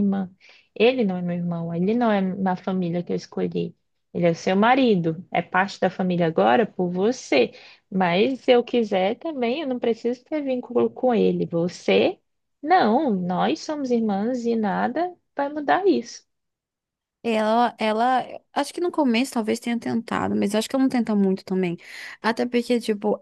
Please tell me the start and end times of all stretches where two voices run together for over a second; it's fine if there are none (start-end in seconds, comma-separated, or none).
none